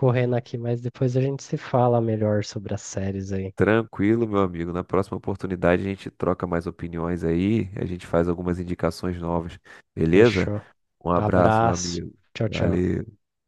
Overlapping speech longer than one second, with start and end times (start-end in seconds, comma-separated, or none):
11.1-12.8